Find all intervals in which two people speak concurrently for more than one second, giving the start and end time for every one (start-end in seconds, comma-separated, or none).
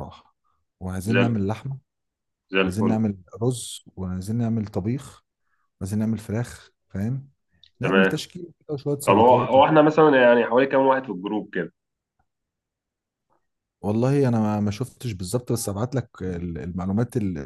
none